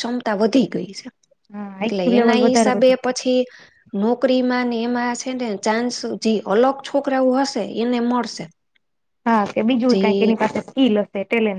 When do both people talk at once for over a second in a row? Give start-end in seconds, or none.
1.8-3.3